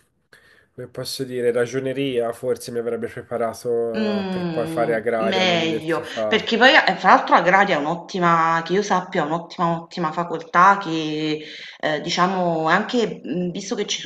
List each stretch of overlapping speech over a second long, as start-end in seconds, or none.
4.0-6.5